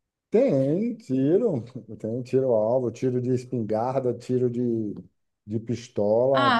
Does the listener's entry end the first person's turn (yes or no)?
yes